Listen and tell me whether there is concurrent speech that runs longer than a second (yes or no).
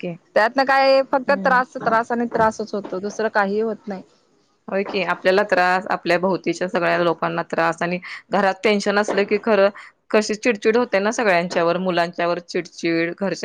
no